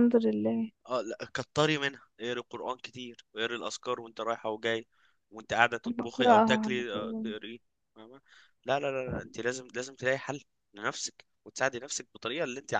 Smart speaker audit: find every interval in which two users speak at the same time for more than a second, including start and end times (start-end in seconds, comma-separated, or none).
5.8-7.3